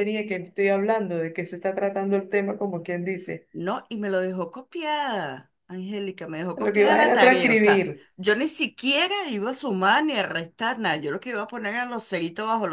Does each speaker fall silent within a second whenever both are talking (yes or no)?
no